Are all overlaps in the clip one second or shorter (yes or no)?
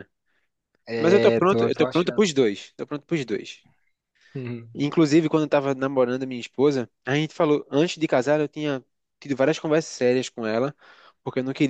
no